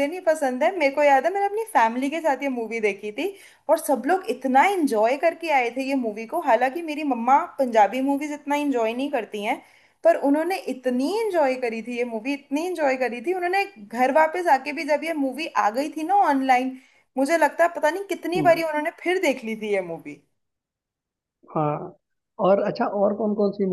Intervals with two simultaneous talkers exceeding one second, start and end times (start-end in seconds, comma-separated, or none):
none